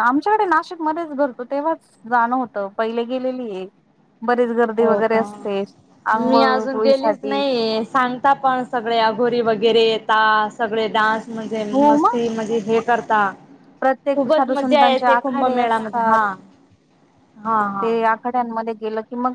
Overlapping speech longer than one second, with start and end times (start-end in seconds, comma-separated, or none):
6.2-7.4, 14.1-16.2